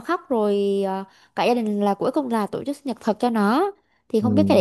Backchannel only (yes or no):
yes